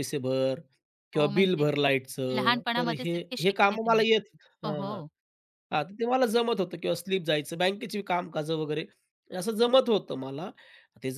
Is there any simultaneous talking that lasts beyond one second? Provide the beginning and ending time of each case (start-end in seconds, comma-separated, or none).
2.4-4.0